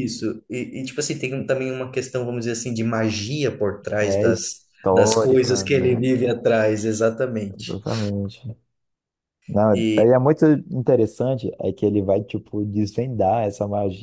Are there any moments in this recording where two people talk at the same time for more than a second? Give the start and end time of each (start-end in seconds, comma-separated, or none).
4.0-6.0